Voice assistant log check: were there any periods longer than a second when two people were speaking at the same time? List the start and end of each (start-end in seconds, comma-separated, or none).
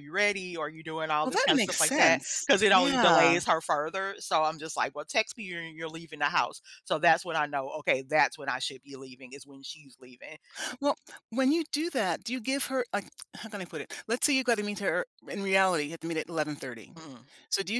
1.2-3.4